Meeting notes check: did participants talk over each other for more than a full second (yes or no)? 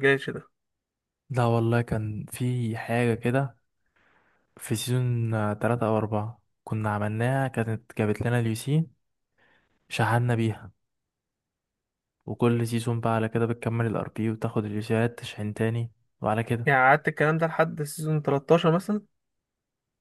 no